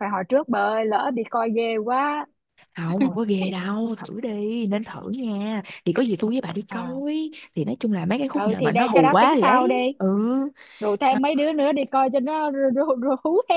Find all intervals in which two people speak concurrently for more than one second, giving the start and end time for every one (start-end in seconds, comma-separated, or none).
8.3-9.9